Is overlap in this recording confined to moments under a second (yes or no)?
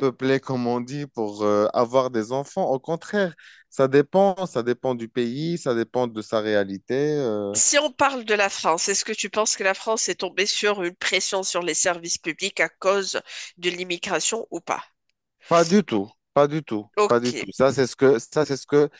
yes